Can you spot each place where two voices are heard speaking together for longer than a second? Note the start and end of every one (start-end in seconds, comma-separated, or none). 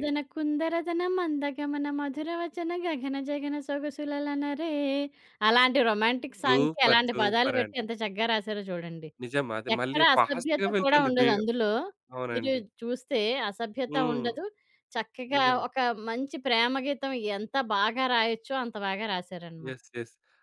6.4-7.8, 9.8-11.3